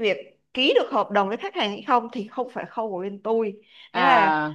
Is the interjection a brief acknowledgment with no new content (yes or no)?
yes